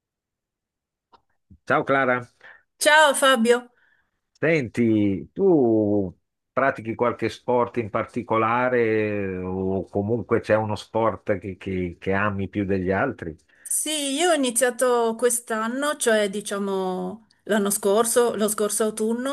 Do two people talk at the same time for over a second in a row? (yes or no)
no